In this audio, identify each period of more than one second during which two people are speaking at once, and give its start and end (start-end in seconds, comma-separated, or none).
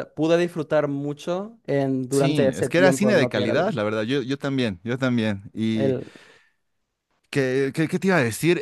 2.1-3.8